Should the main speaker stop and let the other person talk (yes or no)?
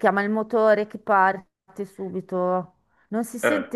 no